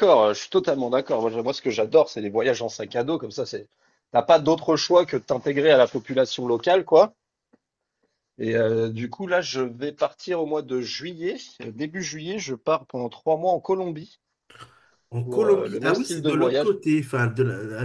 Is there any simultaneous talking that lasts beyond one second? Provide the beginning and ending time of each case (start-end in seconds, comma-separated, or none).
15.2-16.8